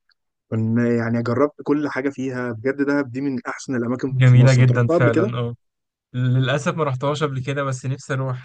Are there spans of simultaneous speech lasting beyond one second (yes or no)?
yes